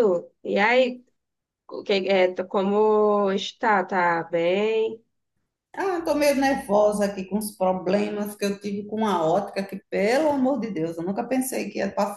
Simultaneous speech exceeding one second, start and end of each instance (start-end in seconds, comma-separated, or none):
none